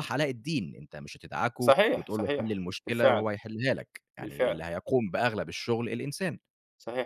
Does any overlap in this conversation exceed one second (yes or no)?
yes